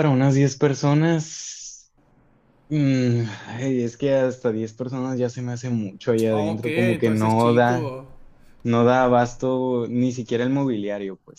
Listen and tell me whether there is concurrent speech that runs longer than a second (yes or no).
yes